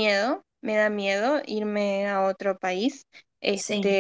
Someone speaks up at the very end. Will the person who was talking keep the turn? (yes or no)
yes